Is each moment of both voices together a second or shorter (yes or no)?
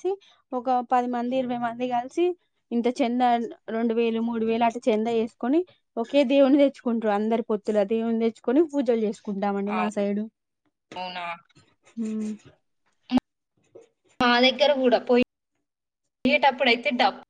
yes